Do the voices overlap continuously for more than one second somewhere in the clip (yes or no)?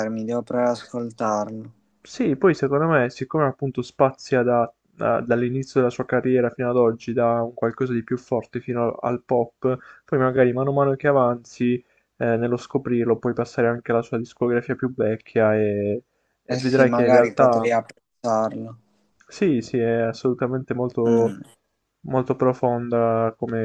yes